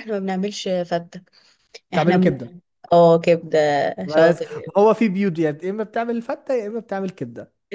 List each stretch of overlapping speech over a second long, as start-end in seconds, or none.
none